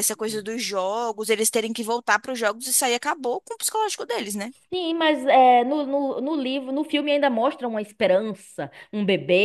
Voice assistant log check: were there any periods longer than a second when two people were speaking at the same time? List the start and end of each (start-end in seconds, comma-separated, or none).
none